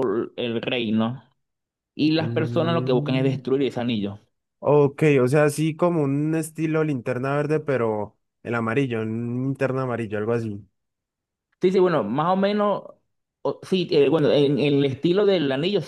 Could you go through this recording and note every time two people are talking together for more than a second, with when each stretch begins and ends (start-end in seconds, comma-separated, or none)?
2.2-3.4